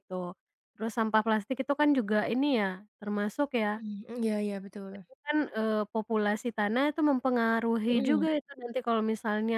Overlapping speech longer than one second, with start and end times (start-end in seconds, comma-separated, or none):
none